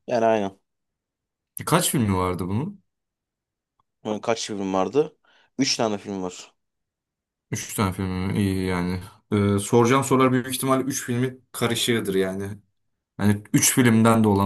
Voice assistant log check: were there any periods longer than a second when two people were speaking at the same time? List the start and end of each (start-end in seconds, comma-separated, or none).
none